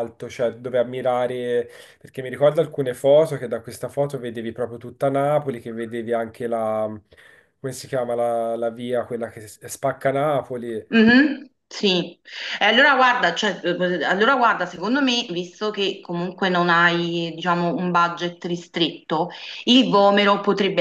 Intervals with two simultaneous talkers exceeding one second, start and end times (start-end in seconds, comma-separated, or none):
none